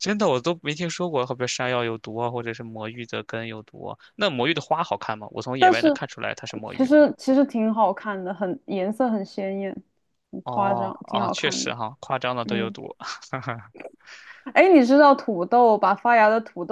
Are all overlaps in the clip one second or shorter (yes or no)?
no